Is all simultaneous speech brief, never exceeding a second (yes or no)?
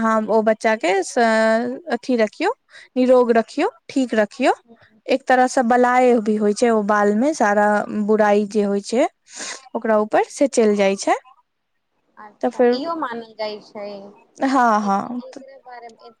yes